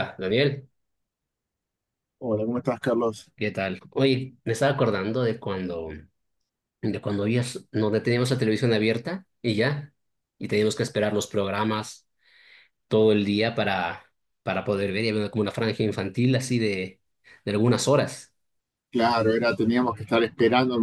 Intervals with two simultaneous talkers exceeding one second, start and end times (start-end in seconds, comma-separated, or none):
none